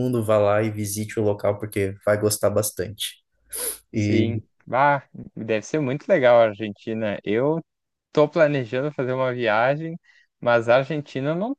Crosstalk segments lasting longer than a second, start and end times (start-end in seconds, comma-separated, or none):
none